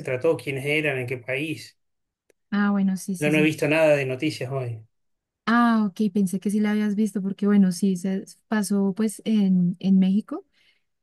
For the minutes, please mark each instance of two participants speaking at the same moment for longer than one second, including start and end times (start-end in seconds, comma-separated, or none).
none